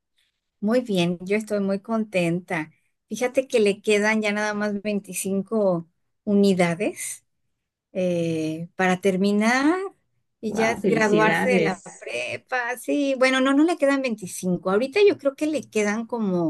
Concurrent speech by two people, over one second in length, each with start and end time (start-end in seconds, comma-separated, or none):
10.5-12.1